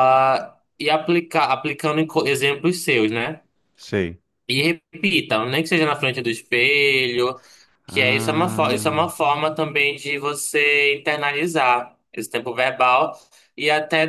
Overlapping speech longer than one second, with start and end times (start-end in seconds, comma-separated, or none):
7.9-9.1